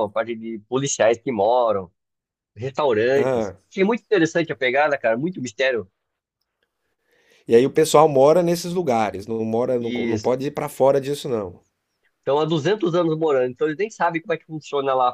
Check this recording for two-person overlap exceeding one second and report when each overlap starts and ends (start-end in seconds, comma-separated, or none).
none